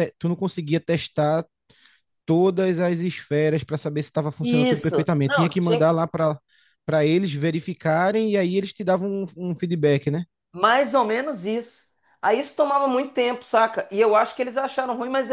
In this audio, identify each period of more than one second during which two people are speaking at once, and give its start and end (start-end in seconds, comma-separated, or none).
4.4-5.9